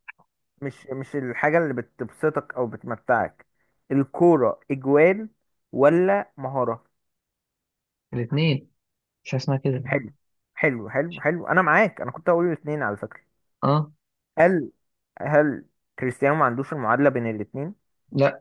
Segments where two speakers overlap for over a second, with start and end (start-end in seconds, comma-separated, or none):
none